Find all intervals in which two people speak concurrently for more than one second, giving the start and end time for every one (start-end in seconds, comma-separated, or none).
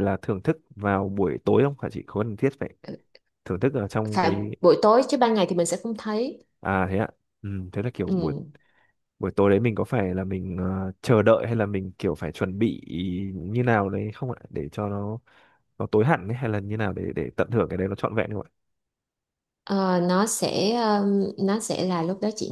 none